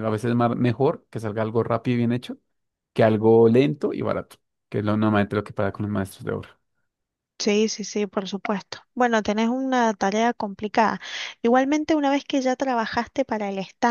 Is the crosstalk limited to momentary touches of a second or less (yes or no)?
yes